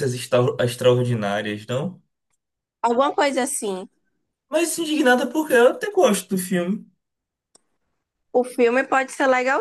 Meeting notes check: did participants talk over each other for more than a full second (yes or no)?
no